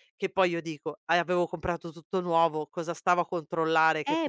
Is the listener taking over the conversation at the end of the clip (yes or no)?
yes